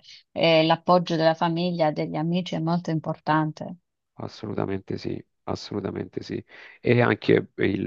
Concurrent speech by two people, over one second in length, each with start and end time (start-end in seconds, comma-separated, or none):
none